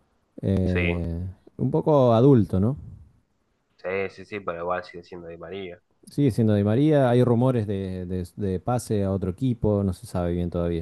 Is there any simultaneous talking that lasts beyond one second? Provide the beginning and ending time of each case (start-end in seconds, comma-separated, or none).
none